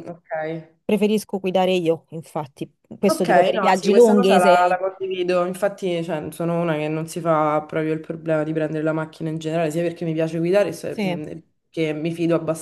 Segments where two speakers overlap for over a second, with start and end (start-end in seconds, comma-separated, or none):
3.1-4.8